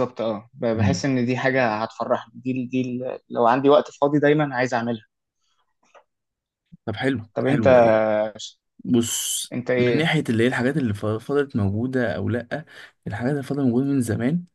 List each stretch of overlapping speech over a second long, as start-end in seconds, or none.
none